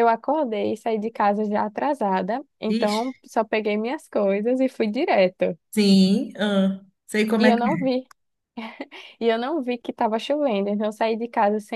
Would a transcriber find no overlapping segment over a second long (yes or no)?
yes